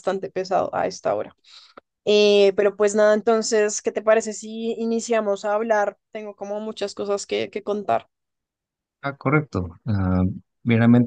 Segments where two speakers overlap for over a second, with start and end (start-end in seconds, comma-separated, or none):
none